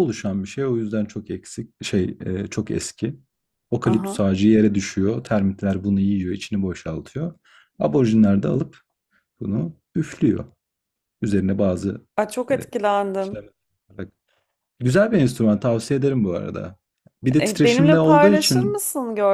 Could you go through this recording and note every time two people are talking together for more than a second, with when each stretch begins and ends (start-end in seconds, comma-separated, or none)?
17.4-18.8